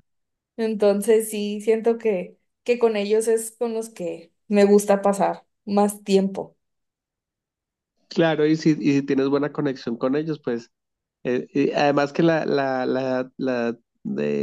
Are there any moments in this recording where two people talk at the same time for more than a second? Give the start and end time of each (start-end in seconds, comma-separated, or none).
none